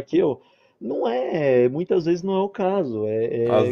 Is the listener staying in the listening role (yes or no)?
no